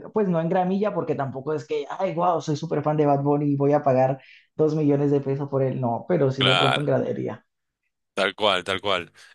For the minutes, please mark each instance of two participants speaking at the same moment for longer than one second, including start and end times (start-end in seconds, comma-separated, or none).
none